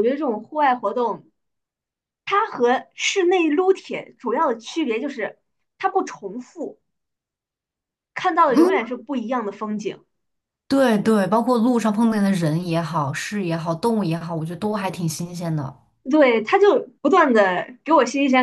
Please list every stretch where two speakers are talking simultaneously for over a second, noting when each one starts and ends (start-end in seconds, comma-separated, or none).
none